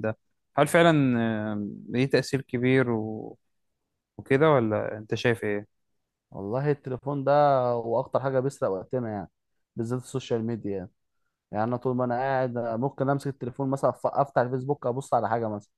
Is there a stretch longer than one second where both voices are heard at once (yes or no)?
no